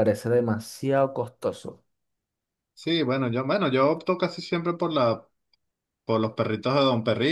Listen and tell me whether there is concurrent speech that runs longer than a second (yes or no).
no